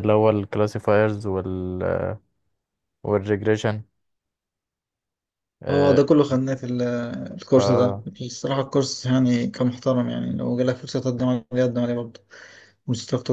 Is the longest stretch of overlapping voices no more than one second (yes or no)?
yes